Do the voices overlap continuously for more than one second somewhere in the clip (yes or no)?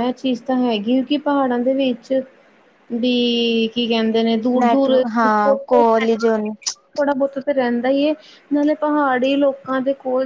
no